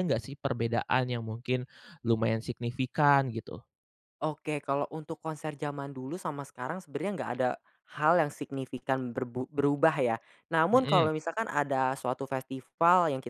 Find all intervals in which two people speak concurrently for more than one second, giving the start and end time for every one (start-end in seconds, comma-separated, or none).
none